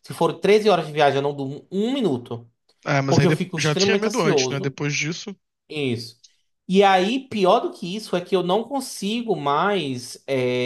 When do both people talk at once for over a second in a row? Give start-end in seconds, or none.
3.1-4.8